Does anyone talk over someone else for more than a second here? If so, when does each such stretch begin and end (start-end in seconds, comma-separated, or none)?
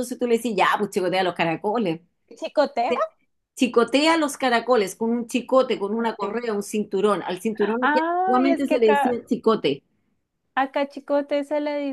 7.8-9.2